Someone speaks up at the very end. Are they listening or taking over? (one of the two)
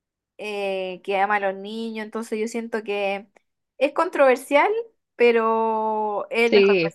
listening